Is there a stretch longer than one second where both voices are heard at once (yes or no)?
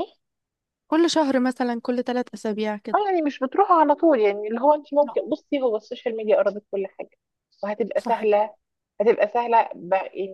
no